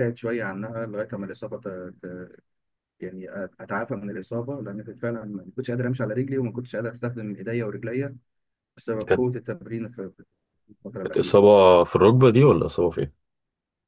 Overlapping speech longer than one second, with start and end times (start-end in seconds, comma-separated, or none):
none